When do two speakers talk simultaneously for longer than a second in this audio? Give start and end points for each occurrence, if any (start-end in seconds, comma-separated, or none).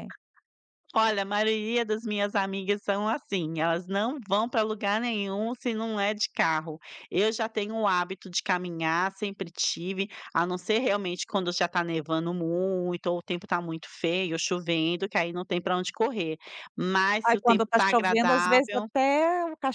17.2-18.9